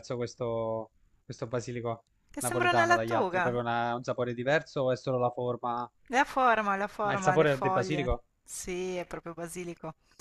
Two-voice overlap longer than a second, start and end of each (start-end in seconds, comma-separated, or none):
2.3-3.6, 7.0-8.2